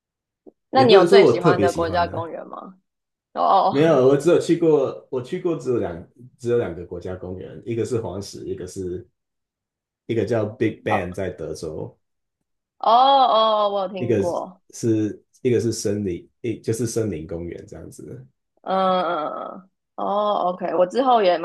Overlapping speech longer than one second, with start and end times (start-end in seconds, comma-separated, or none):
0.7-2.3